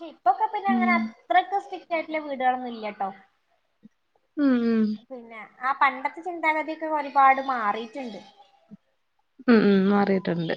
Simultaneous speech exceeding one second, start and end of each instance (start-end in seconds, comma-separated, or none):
none